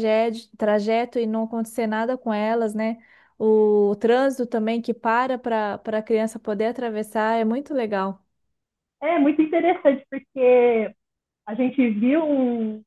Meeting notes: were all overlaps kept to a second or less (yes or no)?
yes